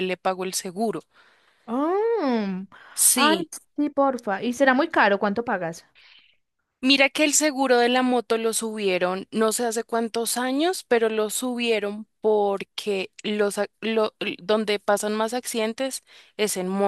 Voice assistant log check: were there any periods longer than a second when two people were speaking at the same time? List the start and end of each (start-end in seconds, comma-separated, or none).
none